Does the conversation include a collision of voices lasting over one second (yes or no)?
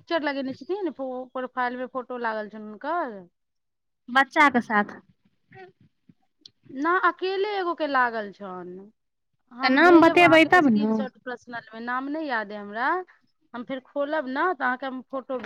yes